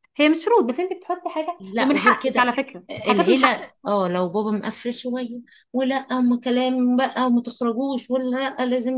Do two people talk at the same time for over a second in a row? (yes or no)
yes